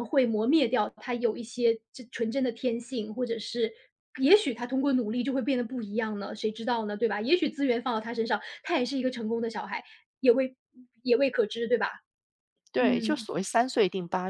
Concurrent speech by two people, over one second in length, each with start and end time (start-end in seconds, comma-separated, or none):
none